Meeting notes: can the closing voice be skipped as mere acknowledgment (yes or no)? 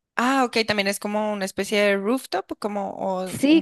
no